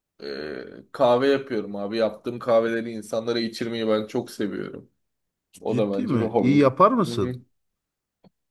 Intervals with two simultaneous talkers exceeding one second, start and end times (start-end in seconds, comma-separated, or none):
5.7-7.3